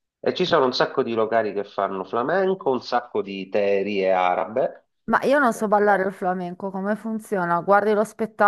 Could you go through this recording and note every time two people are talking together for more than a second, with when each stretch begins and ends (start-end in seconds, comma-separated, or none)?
none